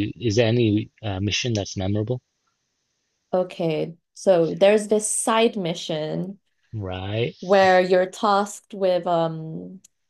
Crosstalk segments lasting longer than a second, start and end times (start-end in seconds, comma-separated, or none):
none